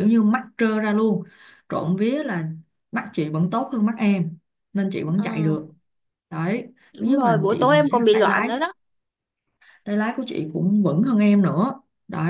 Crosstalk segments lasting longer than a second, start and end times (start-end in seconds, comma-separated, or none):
7.0-8.5